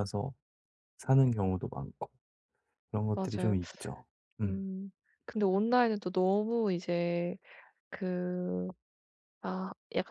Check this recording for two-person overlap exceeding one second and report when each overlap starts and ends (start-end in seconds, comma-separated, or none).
none